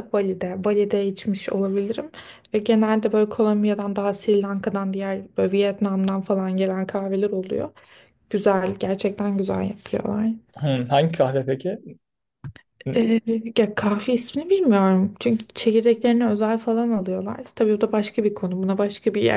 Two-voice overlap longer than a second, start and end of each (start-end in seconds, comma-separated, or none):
none